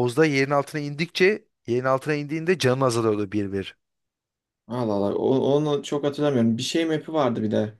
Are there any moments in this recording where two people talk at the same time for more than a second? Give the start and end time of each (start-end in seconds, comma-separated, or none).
none